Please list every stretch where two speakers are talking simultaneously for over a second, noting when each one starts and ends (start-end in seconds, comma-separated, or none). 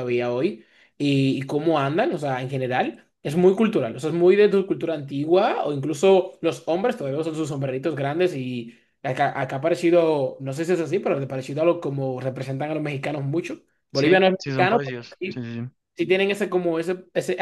13.9-15.4